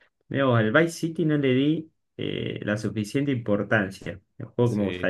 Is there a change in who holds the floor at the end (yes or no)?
yes